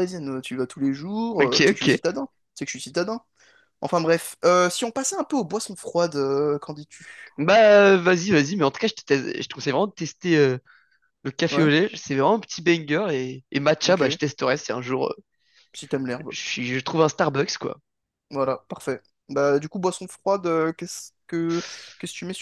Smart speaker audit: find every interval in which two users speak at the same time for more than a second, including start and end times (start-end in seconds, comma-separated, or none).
none